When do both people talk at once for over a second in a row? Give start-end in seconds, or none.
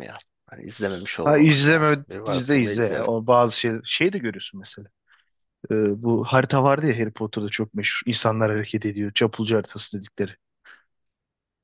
1.2-3.1